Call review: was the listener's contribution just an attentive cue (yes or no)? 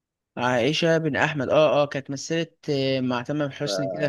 yes